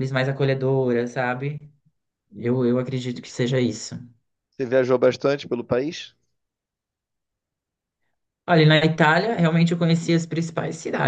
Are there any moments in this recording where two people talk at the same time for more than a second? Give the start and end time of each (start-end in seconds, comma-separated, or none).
none